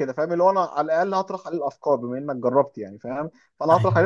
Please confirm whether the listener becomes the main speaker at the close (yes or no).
no